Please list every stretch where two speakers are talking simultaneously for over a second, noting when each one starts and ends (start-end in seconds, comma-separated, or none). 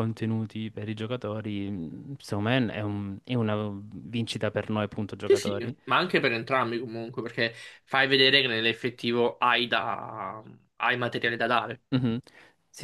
none